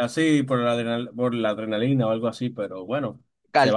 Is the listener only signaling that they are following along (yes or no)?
no